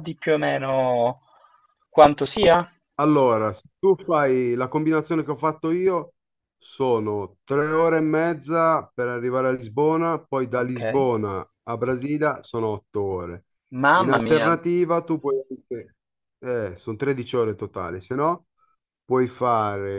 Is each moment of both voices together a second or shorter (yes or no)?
yes